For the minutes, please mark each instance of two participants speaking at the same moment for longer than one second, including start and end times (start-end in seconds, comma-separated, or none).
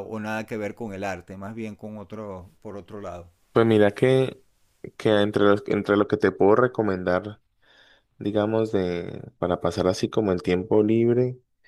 none